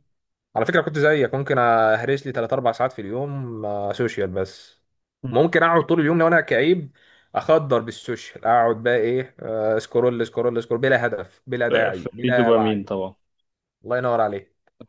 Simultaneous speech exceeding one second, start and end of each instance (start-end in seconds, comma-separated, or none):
11.7-12.9